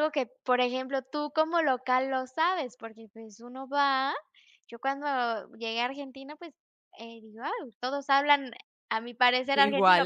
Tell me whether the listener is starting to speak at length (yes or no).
no